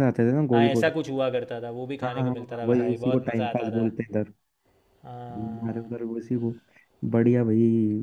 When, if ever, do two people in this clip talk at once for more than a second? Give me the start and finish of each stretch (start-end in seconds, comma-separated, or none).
2.0-3.9